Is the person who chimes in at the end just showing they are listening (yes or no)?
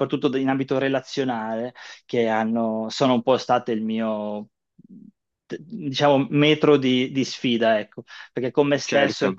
yes